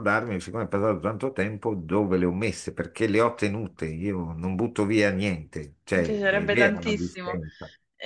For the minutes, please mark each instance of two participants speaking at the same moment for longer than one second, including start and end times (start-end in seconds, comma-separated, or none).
5.9-7.4